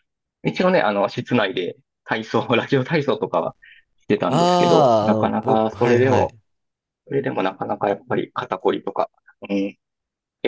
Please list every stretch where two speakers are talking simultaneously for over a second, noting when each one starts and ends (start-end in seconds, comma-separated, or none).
4.3-6.3